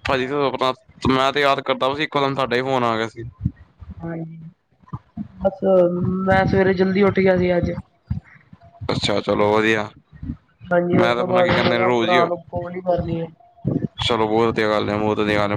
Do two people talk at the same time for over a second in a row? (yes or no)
yes